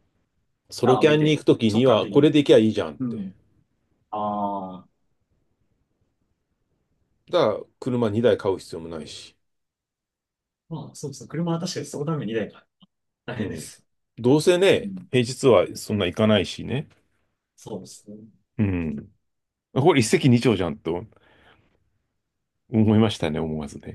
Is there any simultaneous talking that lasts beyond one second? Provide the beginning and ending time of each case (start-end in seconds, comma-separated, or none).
0.8-2.3